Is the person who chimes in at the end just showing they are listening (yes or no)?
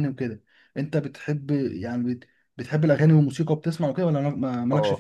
no